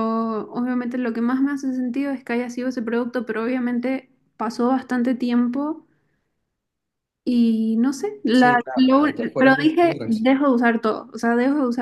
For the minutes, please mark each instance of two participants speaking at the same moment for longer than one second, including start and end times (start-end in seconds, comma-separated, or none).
8.3-10.3